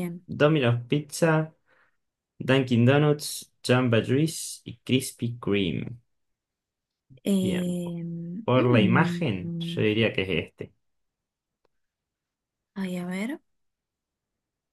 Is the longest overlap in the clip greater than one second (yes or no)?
yes